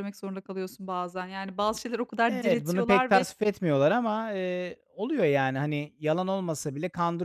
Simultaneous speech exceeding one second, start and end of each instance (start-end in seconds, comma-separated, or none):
2.3-3.5